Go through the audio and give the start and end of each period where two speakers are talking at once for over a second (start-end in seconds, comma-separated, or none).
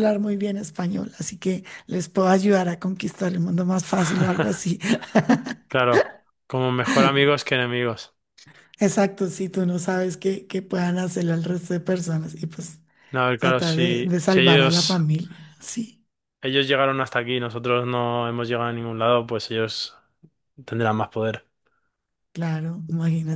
13.4-15.0